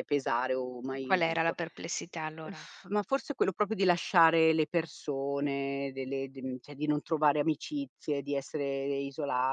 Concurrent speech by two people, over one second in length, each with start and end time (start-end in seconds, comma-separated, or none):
none